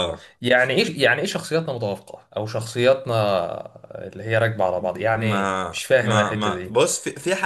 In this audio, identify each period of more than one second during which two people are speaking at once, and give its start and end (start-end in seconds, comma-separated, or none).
5.1-6.8